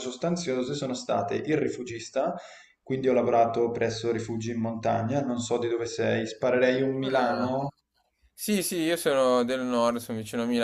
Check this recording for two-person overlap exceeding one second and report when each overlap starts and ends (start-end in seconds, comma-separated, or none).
none